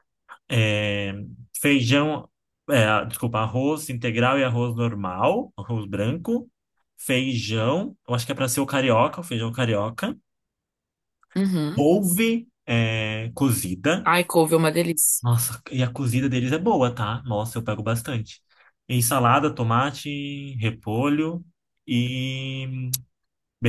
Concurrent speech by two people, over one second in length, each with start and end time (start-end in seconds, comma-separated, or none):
none